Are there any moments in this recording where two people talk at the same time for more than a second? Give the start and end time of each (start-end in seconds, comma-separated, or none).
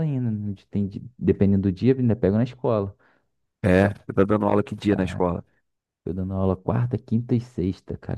none